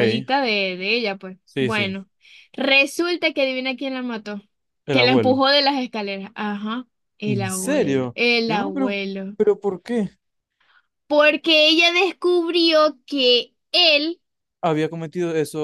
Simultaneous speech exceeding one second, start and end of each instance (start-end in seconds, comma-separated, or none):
7.2-9.0